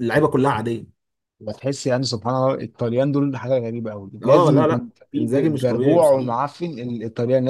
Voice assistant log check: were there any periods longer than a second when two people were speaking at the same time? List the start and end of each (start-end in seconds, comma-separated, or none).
4.2-6.3